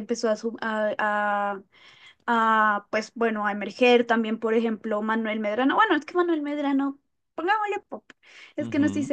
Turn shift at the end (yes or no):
yes